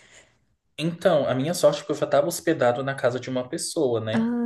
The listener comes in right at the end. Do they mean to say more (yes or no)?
no